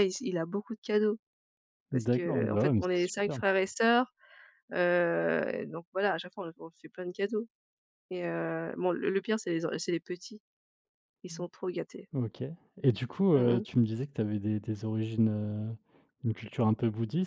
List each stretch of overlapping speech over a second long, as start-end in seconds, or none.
1.9-3.4